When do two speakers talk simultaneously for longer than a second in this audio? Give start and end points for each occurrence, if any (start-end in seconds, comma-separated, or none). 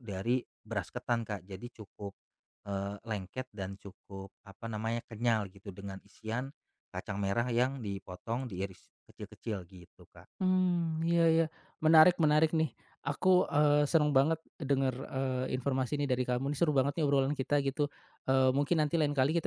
none